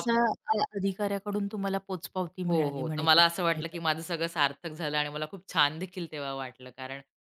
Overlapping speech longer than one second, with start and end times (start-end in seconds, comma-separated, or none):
2.5-3.8